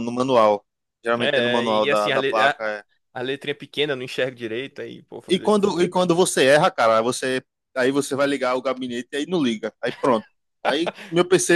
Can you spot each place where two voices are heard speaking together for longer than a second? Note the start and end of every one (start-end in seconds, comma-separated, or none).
1.2-2.6